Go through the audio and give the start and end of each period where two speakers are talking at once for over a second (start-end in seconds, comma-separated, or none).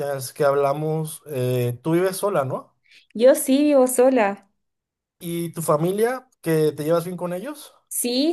none